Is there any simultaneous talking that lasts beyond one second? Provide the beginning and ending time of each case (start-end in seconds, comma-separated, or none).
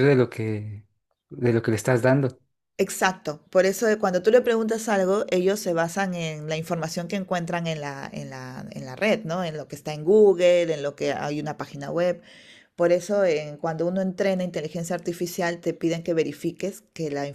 none